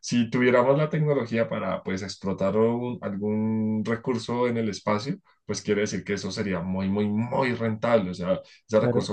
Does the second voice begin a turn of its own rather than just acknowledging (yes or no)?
no